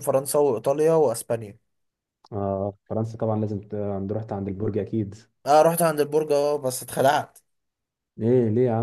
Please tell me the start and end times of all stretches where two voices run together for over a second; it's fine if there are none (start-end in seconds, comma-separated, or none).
none